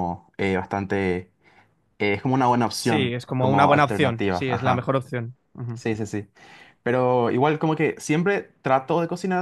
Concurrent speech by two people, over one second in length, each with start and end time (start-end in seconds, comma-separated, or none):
2.8-4.9